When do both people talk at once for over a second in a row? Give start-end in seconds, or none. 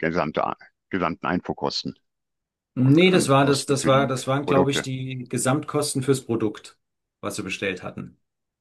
2.8-4.9